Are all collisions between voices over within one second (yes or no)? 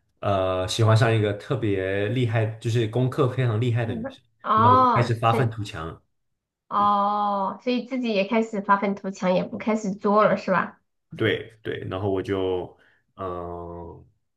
no